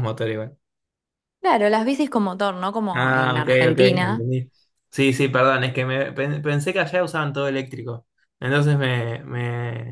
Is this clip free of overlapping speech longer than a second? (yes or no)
no